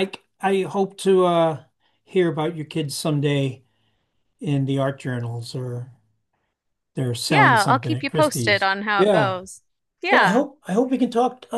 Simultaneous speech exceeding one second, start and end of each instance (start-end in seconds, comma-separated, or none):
7.3-9.4